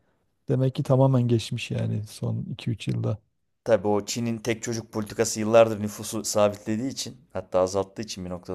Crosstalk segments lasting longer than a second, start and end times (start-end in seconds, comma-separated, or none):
none